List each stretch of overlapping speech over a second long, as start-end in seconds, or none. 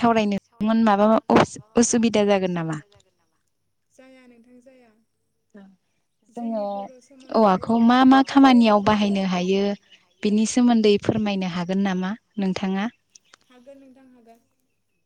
7.4-9.7